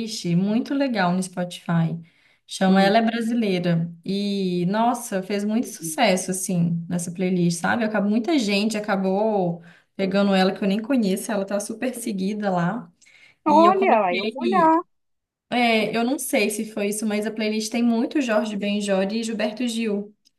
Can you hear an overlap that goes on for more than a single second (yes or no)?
yes